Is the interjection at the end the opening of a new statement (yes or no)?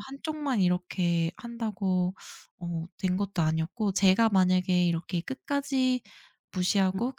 no